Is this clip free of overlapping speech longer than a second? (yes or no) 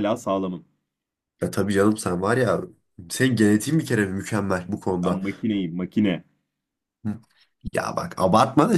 yes